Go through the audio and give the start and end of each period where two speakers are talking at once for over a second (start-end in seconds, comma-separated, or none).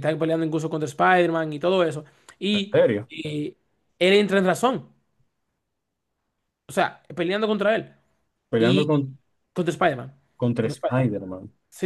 none